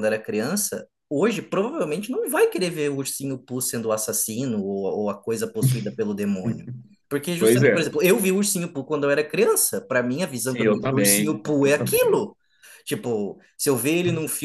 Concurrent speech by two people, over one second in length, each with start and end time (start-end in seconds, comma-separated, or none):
10.4-12.2